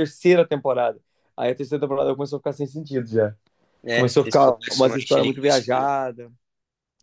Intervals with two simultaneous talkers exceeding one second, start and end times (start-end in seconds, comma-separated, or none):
3.9-5.6